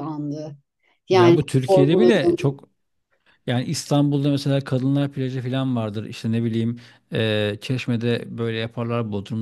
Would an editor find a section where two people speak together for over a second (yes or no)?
yes